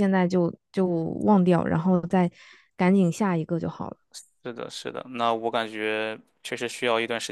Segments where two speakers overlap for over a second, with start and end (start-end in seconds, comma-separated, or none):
none